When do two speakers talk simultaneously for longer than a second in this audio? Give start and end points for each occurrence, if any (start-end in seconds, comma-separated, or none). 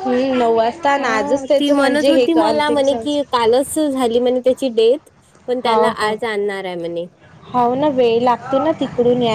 1.0-3.2